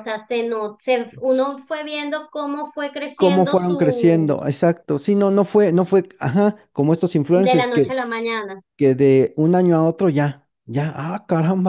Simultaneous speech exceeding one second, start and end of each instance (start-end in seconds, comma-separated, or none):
3.1-4.4